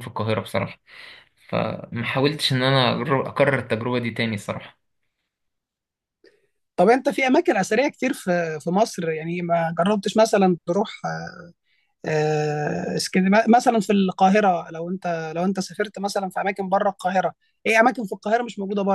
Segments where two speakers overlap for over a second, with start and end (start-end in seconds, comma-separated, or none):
none